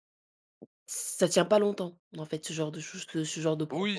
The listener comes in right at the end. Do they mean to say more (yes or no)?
yes